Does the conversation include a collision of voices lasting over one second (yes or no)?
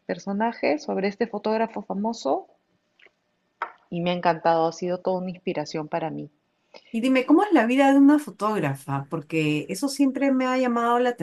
no